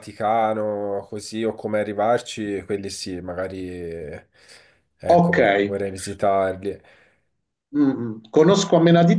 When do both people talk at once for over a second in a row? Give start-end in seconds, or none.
none